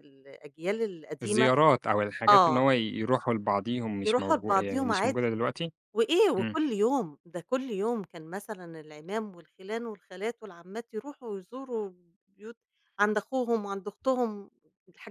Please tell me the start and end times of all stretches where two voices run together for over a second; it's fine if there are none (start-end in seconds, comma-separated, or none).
4.0-5.3